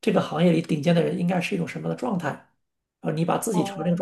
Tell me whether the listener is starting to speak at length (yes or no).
no